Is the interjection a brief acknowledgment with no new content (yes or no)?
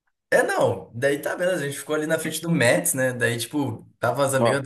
yes